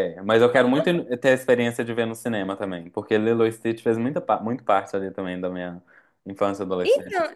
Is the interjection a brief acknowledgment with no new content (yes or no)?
no